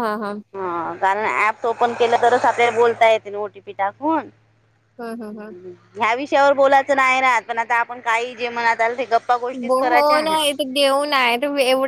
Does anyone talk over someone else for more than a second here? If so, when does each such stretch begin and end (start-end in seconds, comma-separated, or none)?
none